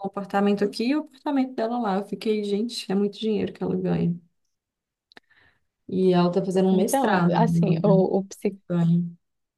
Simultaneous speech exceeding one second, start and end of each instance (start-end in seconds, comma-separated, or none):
6.7-8.0